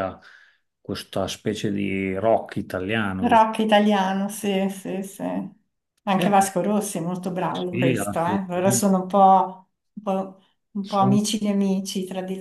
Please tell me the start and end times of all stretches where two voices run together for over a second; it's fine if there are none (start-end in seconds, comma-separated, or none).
7.5-8.9